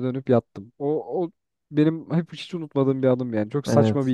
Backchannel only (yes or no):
yes